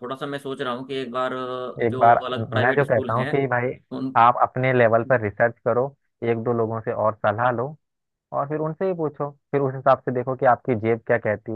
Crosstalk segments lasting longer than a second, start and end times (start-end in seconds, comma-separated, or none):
1.8-3.3